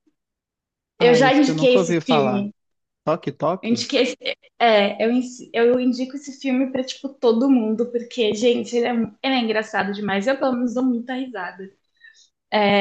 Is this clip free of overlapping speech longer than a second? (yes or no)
no